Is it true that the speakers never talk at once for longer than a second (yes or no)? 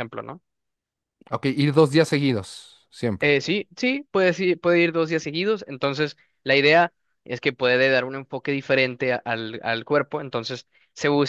yes